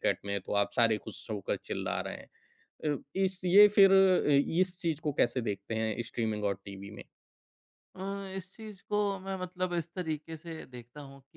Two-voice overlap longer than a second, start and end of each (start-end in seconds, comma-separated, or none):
none